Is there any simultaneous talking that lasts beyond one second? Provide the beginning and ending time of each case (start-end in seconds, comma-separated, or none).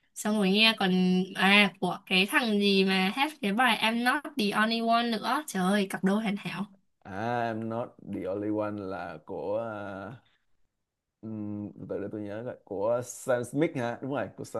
none